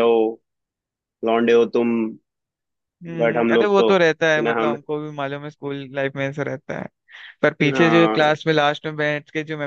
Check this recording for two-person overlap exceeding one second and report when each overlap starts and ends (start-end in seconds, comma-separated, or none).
3.2-4.8